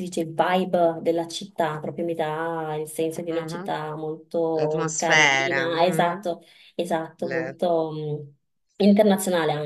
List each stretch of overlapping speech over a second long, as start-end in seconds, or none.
4.5-6.3